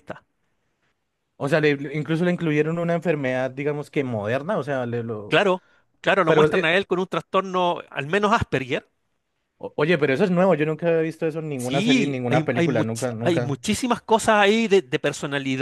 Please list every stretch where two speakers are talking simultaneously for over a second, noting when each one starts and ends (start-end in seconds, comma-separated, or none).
11.6-13.6